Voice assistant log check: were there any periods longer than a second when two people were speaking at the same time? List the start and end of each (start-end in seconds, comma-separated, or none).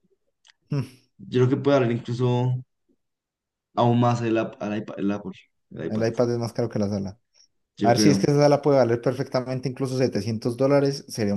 none